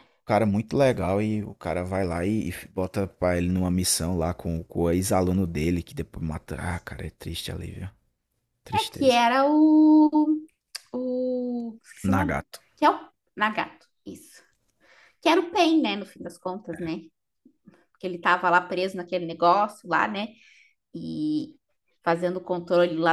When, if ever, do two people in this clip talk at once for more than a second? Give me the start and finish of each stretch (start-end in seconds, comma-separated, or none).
none